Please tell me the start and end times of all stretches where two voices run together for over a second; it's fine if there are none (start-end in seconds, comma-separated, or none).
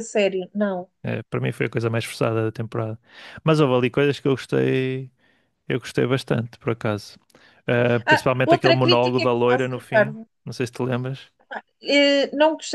8.1-10.3